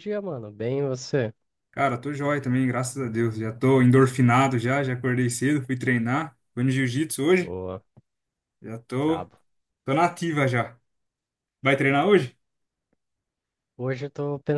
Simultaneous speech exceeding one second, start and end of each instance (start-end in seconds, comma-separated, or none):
none